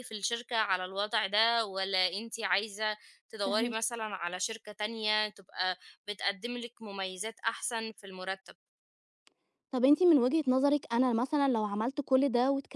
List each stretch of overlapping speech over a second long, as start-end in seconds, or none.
none